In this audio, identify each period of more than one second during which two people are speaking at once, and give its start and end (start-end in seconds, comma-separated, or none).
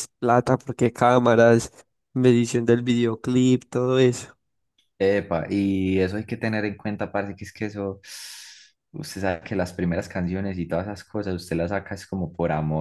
none